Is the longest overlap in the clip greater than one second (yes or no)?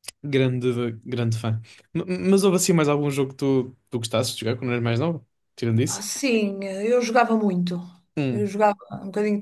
no